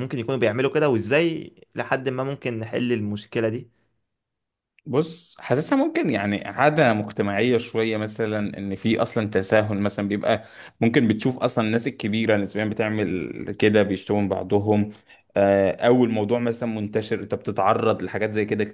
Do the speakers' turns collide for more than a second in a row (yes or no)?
no